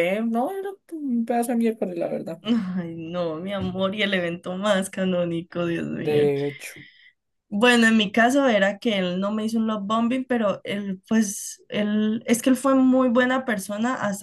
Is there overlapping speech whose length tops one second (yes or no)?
no